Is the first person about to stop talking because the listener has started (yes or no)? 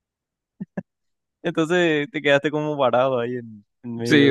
yes